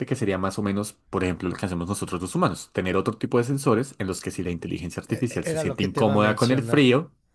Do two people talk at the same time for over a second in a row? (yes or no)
yes